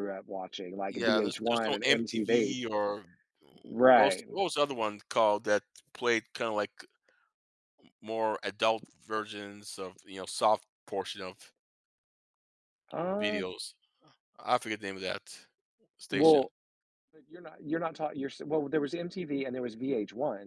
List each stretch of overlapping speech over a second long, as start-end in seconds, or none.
0.9-2.6